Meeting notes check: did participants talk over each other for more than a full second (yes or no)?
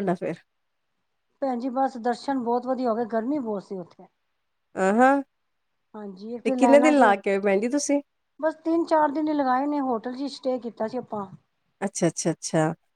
no